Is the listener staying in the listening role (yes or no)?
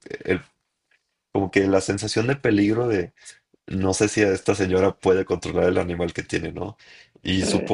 yes